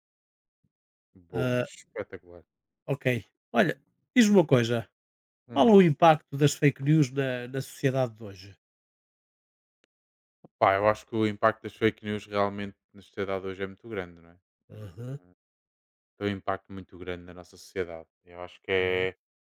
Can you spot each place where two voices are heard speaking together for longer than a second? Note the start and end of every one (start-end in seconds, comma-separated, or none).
none